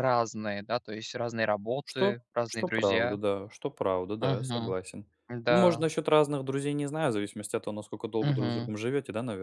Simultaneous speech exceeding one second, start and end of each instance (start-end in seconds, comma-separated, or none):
1.8-3.2